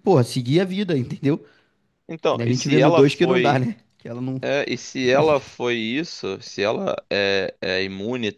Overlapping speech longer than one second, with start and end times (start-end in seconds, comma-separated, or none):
2.3-3.7